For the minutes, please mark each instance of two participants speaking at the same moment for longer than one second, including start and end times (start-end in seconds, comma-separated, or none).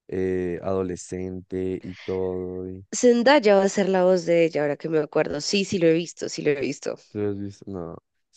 none